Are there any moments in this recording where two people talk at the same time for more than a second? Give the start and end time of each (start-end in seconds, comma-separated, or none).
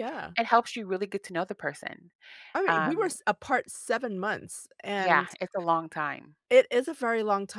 none